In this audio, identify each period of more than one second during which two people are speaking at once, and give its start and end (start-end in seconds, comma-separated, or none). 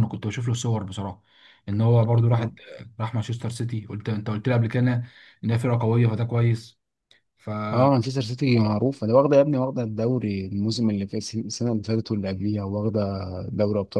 none